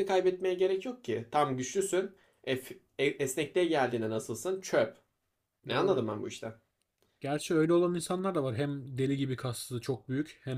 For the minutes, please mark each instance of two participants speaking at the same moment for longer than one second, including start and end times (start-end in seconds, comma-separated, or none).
none